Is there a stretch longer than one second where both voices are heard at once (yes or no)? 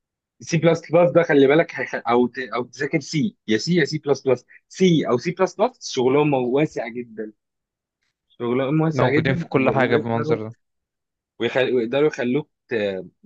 yes